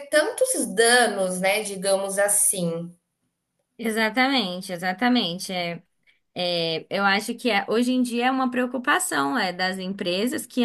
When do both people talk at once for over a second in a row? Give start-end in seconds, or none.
none